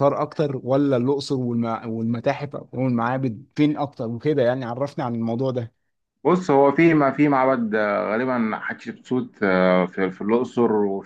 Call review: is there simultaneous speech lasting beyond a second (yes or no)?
no